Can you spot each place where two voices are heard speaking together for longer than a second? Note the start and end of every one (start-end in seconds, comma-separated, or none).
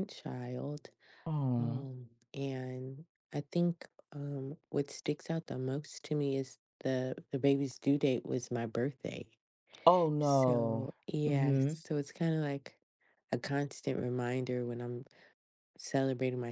10.2-11.8